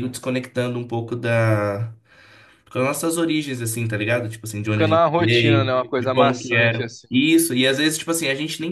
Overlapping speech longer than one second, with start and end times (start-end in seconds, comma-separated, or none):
4.7-7.1